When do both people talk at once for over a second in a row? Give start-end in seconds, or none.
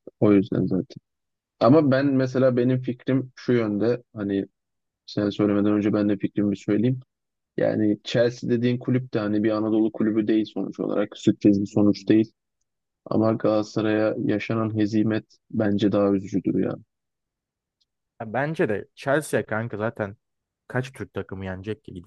none